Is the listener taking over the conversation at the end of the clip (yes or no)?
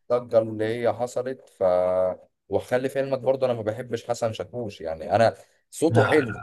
no